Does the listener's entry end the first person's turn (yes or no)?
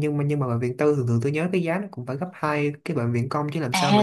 yes